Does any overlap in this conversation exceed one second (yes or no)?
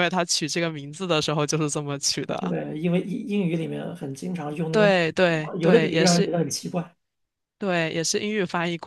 yes